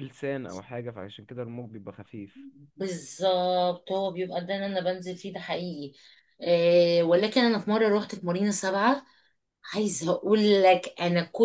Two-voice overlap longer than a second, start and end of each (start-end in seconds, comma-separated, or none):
none